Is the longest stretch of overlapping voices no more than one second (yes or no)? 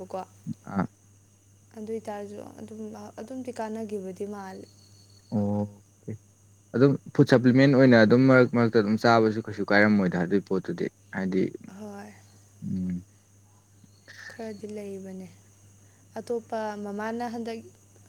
yes